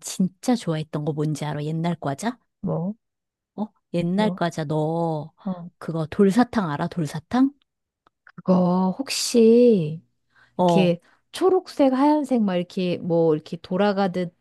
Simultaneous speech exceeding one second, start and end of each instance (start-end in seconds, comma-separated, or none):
none